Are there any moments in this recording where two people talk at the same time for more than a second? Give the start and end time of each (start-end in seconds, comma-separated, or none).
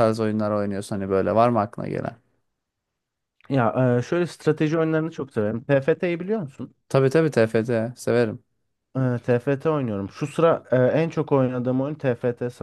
none